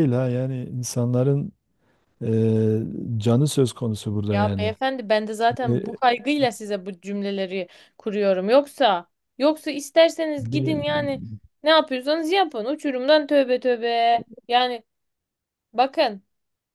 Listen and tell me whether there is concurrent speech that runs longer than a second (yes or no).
no